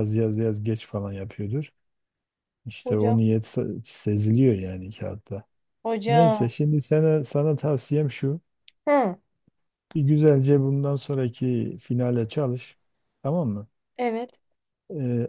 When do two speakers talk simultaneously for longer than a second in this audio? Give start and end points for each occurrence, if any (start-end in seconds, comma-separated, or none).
none